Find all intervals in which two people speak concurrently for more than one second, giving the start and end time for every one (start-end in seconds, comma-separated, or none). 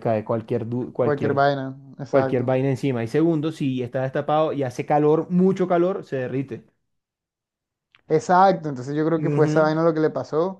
none